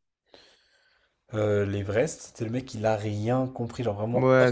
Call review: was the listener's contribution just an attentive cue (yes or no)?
no